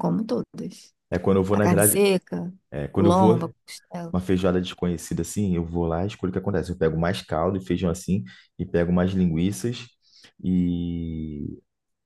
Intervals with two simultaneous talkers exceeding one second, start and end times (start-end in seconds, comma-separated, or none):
none